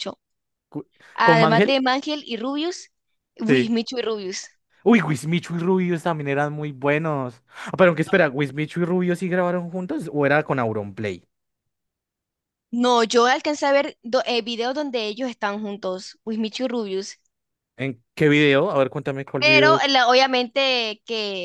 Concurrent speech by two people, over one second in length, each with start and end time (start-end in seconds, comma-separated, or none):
none